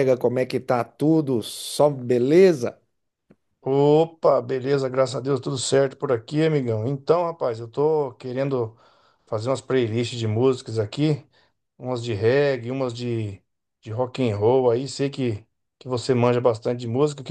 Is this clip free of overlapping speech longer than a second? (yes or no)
yes